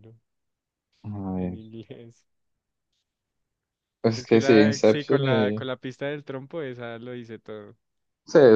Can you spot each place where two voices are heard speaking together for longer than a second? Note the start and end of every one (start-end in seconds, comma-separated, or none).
4.2-5.7